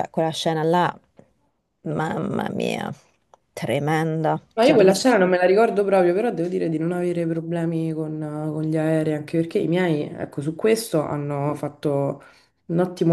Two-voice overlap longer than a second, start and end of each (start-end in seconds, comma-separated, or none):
none